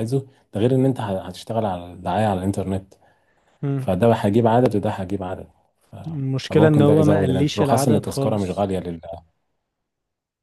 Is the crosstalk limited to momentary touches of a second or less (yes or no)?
no